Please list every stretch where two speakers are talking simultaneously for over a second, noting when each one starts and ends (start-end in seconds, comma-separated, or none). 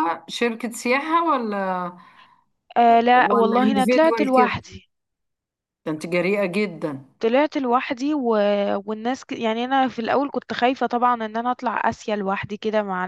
3.1-4.5